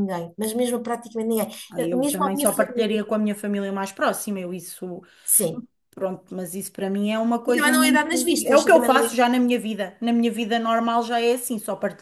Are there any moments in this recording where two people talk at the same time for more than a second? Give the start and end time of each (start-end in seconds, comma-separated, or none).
1.7-3.0, 7.5-9.2